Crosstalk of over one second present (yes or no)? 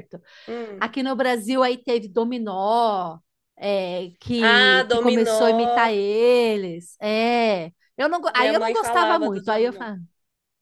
yes